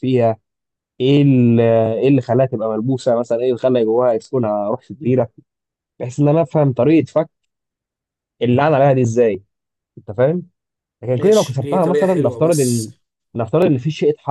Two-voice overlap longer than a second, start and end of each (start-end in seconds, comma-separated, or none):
11.1-12.9